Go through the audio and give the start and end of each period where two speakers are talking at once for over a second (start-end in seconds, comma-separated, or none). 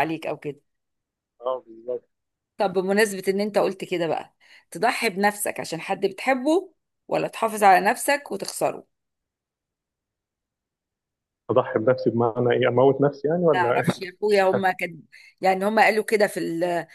none